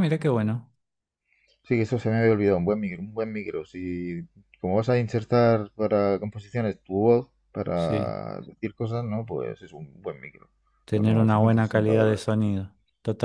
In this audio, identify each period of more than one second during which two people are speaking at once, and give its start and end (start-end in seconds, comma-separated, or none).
10.9-12.2